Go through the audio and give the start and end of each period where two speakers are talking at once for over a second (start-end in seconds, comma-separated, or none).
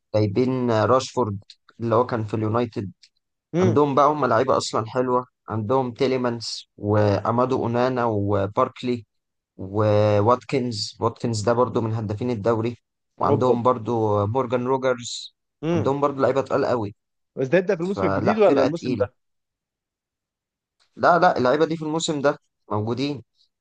17.8-19.1